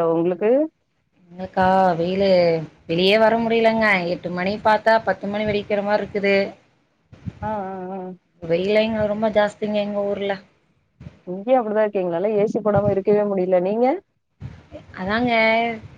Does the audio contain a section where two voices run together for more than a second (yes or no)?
no